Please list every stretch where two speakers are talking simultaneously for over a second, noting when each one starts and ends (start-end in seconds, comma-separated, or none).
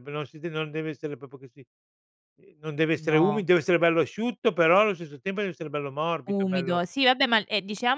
none